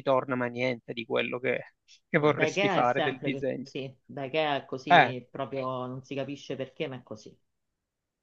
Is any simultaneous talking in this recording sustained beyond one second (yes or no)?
yes